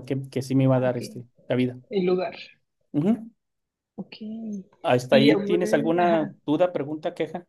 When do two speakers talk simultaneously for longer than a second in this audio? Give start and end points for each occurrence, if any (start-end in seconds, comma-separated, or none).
5.1-6.3